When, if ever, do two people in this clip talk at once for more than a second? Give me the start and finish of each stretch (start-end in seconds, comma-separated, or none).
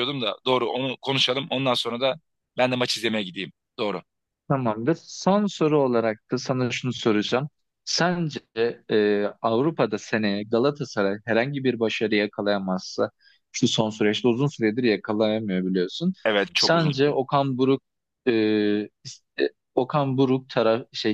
none